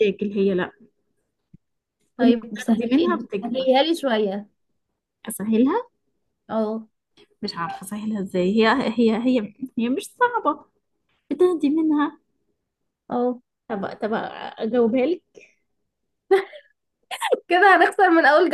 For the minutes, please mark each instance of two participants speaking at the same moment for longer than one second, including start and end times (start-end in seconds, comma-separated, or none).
2.2-3.8